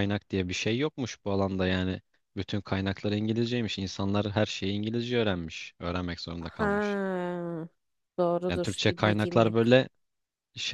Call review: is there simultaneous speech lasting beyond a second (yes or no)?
yes